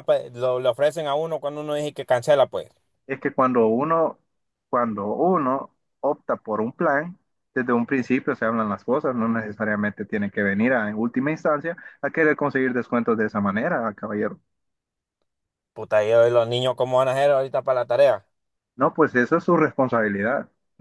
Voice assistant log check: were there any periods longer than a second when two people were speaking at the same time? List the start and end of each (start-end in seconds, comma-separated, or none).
none